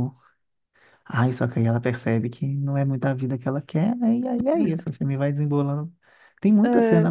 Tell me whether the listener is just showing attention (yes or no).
yes